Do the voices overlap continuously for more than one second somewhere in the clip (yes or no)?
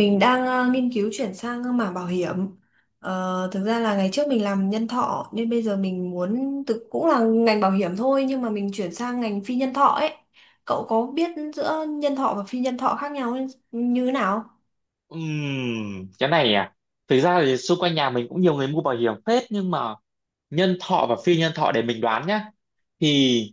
no